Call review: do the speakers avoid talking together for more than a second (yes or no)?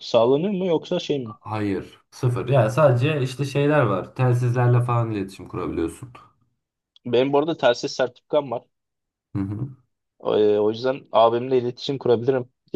yes